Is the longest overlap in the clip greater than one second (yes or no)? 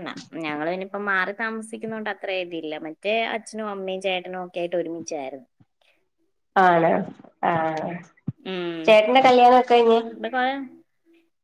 no